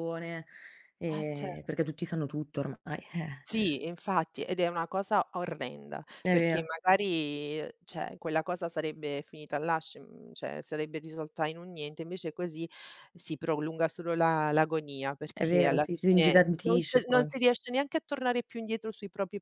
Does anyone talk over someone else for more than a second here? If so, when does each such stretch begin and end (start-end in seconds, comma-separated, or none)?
15.3-17.3